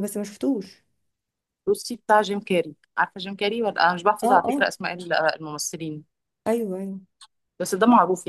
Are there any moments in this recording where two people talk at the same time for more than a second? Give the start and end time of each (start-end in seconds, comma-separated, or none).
none